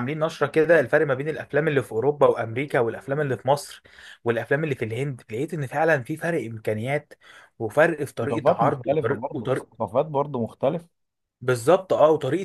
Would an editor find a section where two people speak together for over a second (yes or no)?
yes